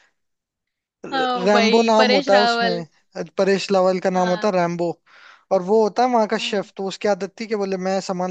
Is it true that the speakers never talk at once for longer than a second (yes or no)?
no